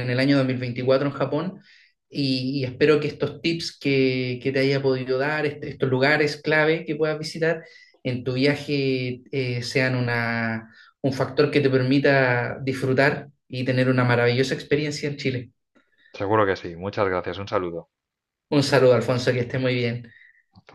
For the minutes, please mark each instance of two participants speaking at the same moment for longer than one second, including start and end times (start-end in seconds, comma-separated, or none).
none